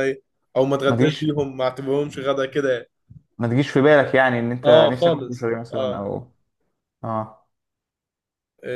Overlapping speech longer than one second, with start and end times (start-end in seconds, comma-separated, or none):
4.6-6.0